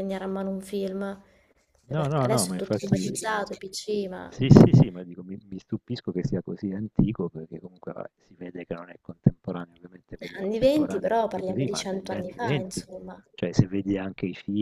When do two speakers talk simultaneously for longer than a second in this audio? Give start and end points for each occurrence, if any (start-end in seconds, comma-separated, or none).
1.9-3.1, 10.4-12.8